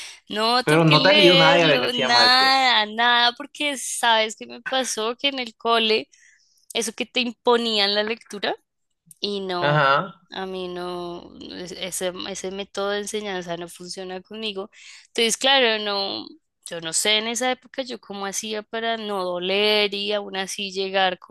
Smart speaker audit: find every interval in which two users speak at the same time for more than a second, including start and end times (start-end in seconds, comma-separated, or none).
0.6-2.6